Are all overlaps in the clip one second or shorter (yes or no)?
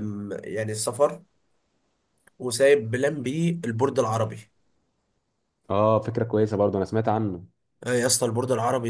yes